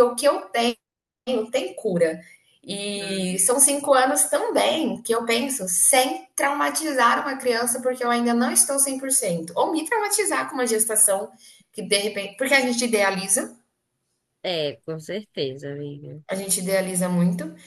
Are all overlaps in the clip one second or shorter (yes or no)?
yes